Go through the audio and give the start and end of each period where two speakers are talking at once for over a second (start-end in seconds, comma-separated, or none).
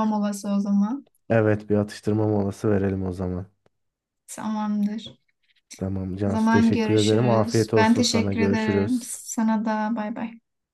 6.3-9.2